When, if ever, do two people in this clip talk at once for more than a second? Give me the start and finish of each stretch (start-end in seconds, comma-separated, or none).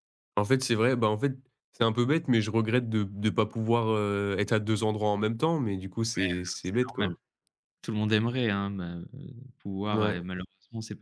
none